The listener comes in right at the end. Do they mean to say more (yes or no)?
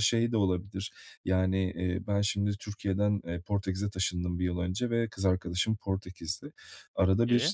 no